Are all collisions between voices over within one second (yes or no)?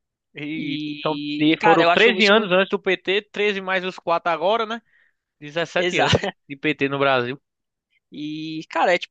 no